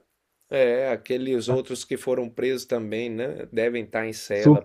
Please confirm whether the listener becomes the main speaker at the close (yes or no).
yes